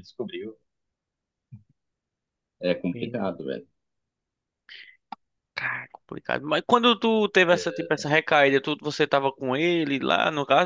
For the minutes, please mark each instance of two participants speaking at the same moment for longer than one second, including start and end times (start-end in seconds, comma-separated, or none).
none